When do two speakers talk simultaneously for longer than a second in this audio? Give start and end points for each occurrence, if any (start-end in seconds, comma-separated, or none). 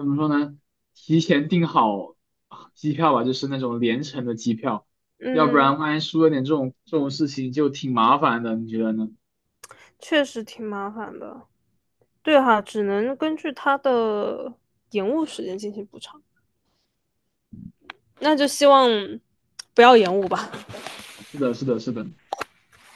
none